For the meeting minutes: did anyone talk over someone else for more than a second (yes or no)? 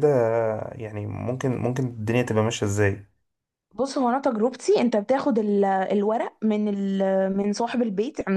no